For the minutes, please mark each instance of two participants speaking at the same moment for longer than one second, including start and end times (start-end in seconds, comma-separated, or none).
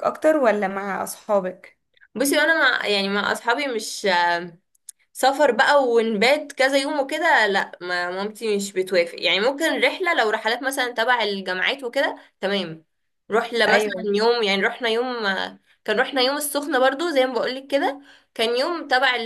none